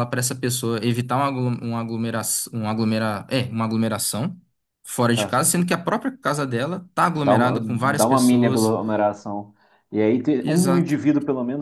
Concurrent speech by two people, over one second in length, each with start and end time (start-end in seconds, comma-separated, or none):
7.2-8.8